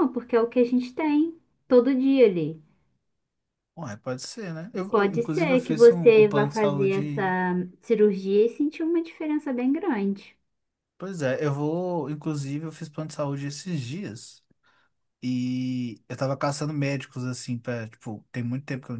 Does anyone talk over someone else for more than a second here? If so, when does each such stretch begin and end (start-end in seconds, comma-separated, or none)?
4.9-7.3